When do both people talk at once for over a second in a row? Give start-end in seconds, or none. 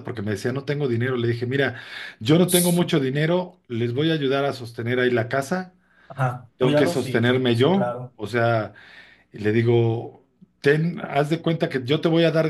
6.6-8.2